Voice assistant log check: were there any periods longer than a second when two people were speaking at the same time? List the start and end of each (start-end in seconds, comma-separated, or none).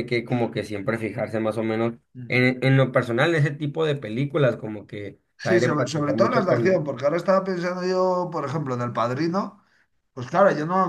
5.4-6.9